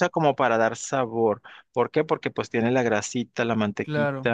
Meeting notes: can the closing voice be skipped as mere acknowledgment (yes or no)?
yes